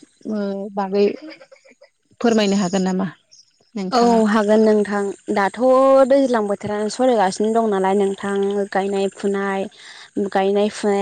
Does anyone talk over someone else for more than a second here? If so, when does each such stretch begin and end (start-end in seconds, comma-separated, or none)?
none